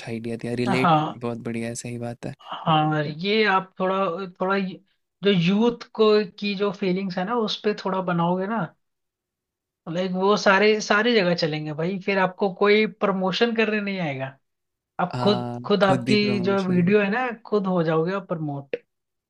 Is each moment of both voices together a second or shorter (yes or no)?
no